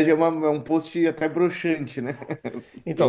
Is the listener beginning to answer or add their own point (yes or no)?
yes